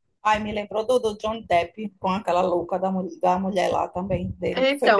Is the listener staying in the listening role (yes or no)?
no